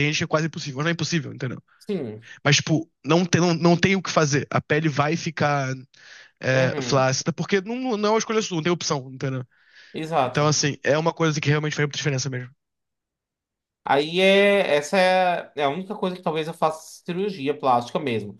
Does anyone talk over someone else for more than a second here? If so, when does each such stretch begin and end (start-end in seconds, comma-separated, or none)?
none